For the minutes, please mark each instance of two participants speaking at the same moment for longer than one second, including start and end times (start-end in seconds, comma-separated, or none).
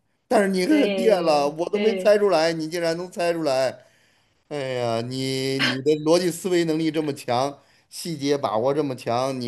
0.7-2.2